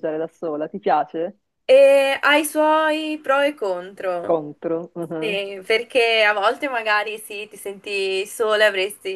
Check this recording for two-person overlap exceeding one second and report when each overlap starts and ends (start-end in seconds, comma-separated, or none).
none